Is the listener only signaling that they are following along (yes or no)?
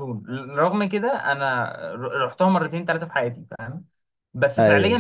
yes